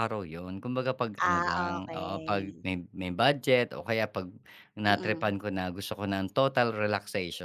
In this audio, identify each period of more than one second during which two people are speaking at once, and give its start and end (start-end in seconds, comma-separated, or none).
1.3-2.6